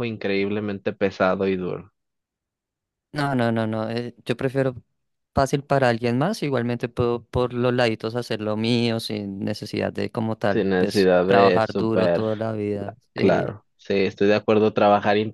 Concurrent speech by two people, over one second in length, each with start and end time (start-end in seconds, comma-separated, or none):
10.5-12.2